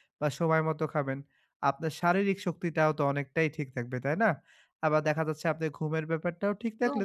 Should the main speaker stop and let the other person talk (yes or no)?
no